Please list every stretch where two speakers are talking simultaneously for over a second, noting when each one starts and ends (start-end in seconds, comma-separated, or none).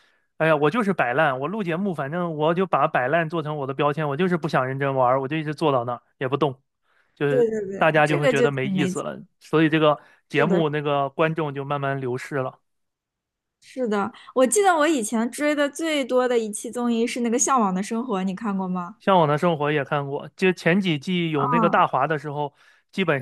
7.3-9.0